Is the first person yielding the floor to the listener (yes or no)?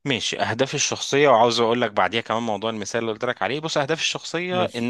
no